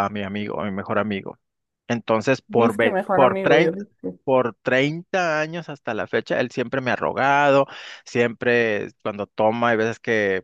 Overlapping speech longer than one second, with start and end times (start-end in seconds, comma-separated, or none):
2.5-3.8